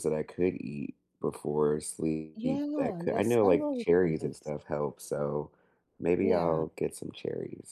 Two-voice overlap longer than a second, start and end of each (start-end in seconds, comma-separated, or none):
2.4-4.5